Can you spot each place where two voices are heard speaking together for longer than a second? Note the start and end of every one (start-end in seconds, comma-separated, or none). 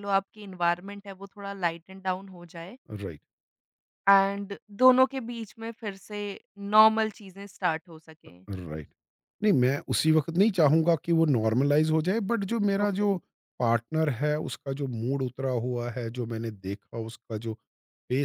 none